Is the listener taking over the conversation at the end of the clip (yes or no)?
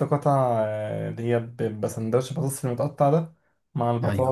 no